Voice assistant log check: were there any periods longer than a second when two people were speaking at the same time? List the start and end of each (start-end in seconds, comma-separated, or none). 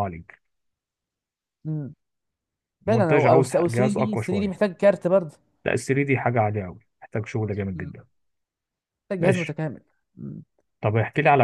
2.9-4.6